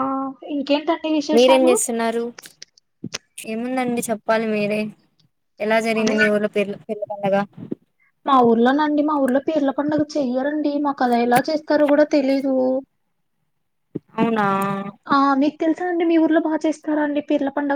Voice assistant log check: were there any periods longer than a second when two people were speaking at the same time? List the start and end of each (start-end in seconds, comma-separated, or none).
none